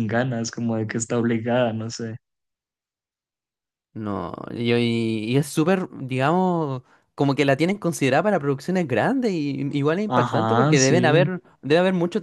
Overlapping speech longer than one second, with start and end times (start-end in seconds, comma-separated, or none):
10.1-11.3